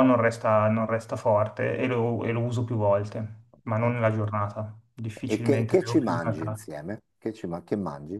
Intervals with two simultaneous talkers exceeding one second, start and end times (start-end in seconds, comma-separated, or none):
5.3-6.7